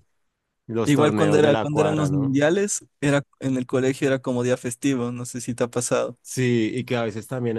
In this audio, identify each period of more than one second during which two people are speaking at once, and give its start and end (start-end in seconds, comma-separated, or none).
0.8-2.4